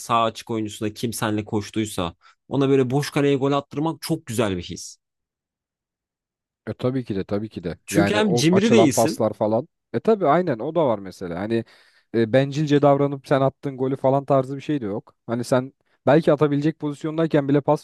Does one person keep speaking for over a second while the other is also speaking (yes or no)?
yes